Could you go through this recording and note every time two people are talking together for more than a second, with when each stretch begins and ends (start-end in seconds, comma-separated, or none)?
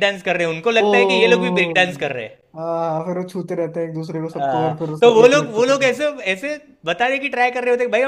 4.3-5.9